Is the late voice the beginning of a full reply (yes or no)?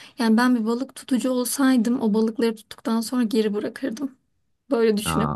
yes